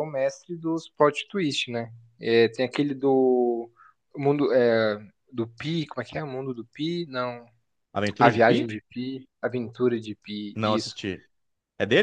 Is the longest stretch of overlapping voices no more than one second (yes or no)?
yes